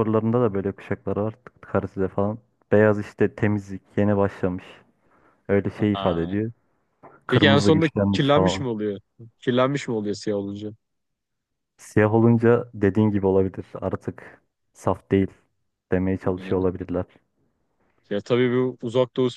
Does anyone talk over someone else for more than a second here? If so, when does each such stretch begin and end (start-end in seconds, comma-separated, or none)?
7.3-8.6